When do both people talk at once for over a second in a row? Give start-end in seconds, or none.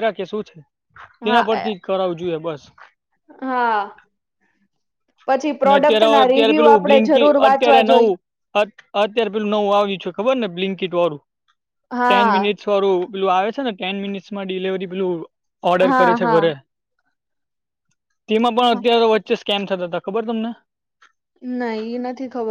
5.7-8.1